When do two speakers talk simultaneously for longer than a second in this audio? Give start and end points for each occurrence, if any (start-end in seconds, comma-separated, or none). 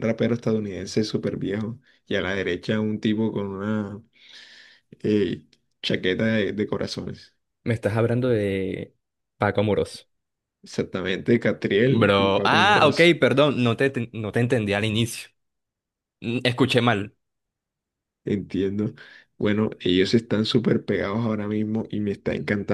11.8-13.1